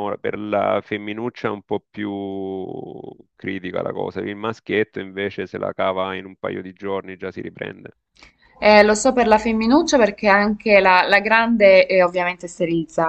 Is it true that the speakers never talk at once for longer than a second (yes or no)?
yes